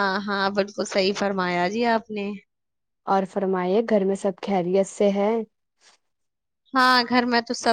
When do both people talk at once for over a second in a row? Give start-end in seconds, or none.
none